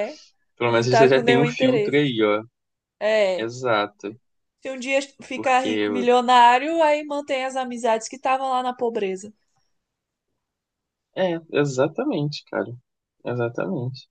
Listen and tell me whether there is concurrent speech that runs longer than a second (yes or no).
yes